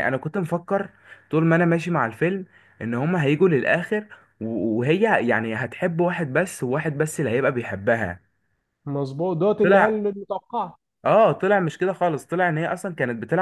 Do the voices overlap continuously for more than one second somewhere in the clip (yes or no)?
no